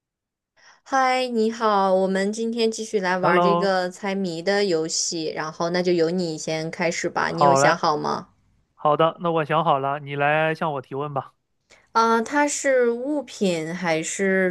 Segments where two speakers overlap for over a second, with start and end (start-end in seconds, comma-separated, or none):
none